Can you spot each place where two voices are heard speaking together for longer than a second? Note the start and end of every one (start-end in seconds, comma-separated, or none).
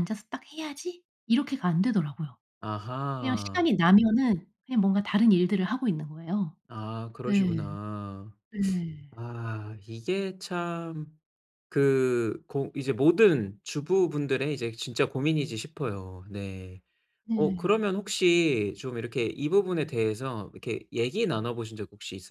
none